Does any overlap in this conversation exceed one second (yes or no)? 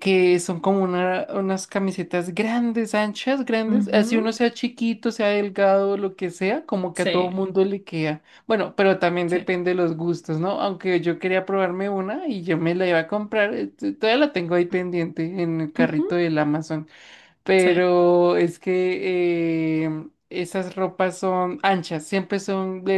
no